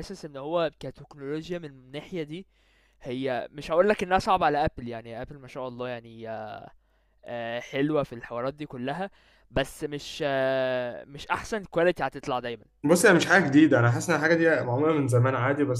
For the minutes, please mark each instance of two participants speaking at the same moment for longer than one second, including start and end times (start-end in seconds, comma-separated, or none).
none